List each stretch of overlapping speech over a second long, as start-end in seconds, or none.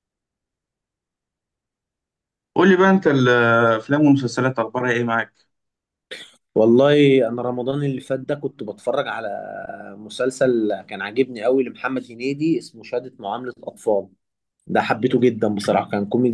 none